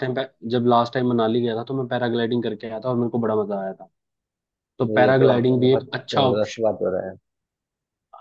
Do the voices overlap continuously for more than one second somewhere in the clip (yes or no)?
yes